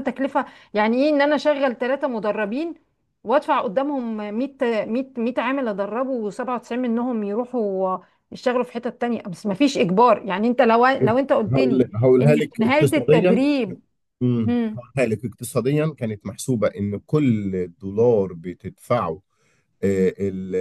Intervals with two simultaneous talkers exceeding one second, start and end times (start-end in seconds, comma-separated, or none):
11.5-13.4